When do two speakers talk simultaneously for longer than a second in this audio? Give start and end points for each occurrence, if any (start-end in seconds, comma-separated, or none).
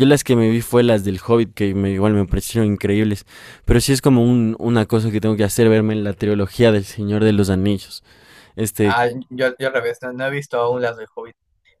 none